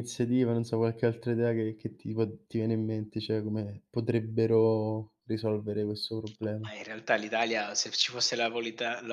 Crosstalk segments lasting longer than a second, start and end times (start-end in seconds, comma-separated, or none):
none